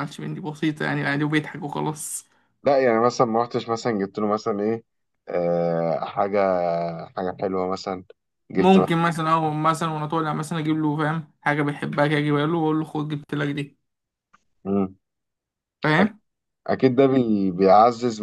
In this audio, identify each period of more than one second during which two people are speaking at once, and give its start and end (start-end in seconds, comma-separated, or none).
none